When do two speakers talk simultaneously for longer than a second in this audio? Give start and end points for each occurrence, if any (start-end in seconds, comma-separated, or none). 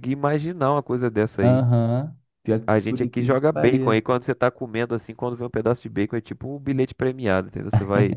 2.7-4.2